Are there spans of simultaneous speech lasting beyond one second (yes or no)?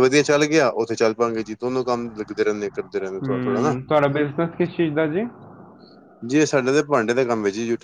no